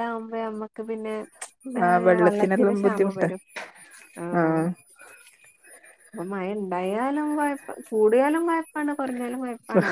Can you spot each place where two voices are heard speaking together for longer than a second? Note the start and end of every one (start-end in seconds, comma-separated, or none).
1.9-3.2